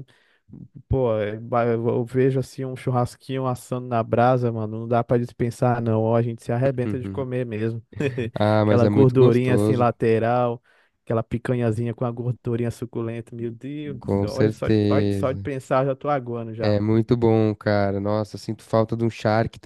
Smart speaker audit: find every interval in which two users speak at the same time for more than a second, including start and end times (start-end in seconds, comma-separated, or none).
8.6-9.9, 14.0-15.4